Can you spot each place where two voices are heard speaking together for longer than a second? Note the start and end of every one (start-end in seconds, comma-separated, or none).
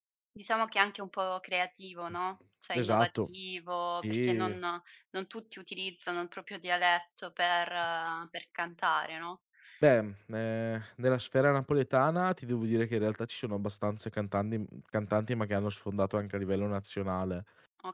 none